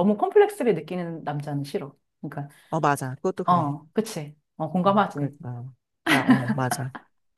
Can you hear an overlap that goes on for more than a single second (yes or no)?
no